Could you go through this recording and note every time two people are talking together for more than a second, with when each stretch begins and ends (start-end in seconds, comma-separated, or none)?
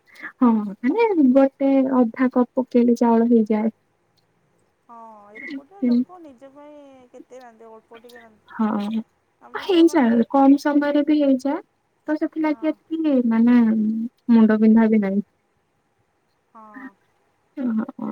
none